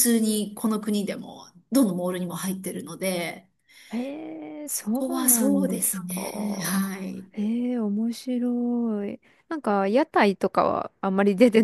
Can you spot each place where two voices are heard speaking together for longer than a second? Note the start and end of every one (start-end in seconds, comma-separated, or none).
4.7-6.8